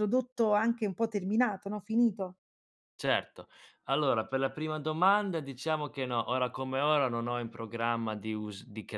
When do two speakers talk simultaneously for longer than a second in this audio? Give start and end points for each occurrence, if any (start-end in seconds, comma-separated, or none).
none